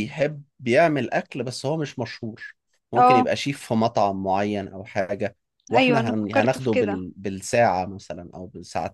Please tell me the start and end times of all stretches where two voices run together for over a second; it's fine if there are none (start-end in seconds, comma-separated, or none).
5.7-7.0